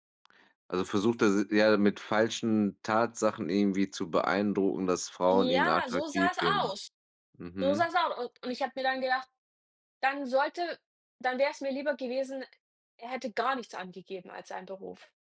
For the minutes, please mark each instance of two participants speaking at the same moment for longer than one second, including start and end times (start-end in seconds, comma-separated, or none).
5.3-6.7